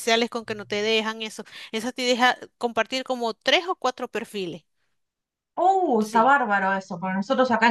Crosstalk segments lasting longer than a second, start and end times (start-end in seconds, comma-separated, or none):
none